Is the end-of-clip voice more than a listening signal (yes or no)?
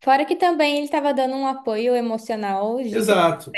yes